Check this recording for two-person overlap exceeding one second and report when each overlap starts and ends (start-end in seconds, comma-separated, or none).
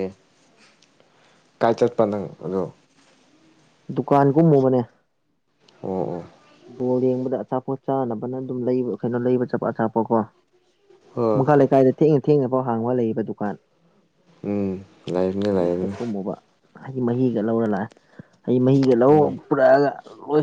none